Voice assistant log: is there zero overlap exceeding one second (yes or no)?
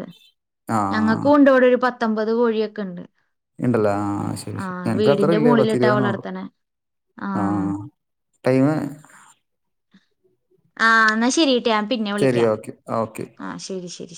no